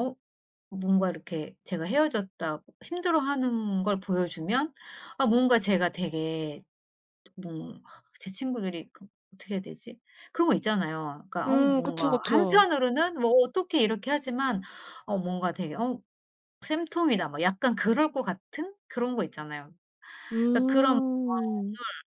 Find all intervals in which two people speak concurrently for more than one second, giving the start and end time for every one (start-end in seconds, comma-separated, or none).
11.5-12.7